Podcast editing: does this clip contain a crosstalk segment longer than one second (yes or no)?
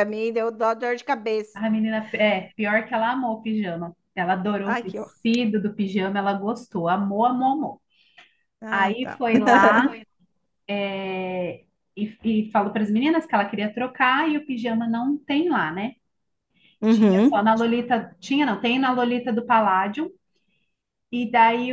no